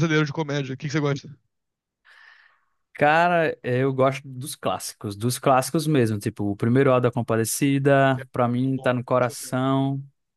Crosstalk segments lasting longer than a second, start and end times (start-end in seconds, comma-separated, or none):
8.1-9.6